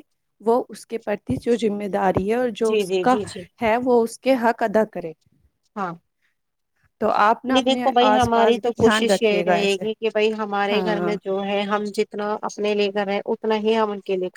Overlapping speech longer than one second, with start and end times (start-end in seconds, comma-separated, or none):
7.5-9.8